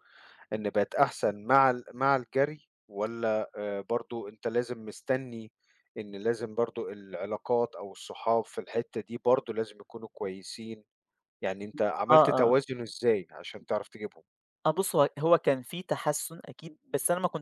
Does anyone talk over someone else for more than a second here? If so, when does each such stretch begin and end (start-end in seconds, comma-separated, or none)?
none